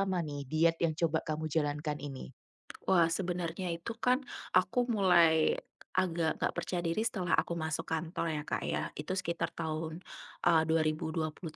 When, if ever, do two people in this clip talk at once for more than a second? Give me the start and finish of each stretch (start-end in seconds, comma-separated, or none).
none